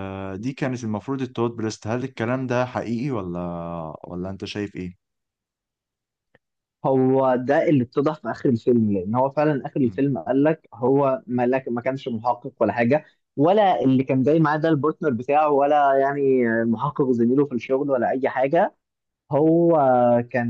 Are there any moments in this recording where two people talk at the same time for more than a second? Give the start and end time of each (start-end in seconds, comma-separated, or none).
none